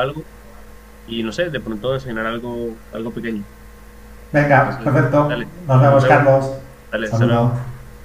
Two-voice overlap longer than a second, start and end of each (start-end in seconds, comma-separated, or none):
4.6-6.3